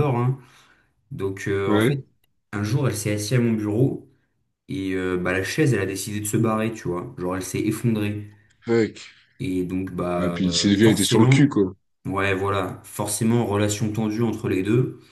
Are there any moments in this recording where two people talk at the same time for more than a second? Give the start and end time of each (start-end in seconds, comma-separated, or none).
10.2-11.5